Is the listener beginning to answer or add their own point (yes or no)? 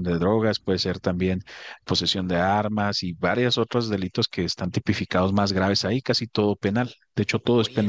yes